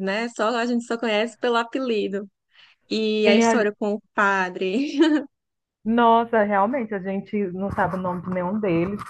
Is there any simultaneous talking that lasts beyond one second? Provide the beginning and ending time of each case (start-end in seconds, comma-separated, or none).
none